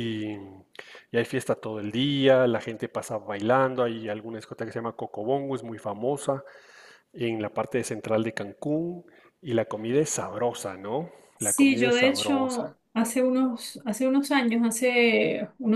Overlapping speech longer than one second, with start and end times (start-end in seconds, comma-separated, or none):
11.4-12.7